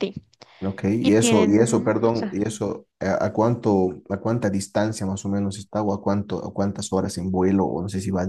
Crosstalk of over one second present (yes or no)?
yes